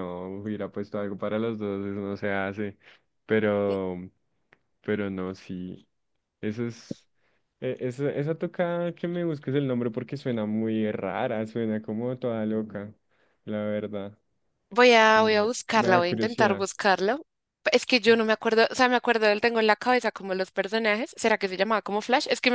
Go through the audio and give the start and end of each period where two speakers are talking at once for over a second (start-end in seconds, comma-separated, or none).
15.1-16.7